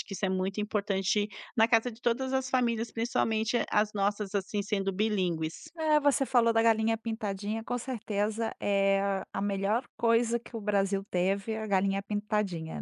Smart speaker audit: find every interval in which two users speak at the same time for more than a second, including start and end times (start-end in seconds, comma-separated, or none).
none